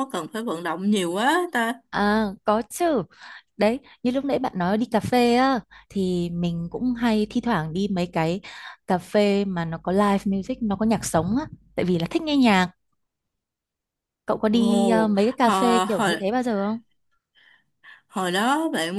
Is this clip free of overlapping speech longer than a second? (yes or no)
no